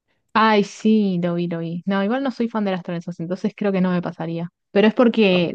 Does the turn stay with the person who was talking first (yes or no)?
yes